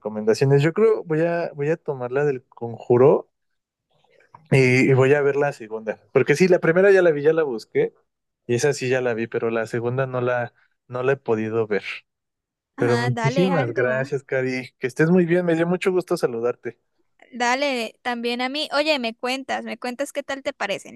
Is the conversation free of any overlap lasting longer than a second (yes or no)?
no